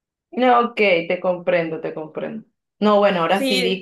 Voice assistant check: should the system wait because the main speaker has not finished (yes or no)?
yes